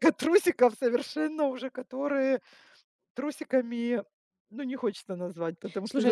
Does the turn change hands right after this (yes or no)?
yes